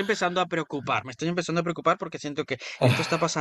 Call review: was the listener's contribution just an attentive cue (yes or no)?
yes